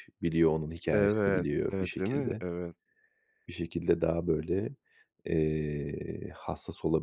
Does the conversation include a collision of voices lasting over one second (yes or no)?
yes